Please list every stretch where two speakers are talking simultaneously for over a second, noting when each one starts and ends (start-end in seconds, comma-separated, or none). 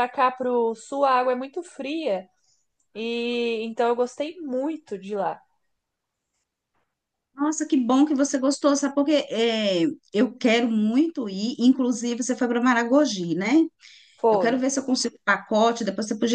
none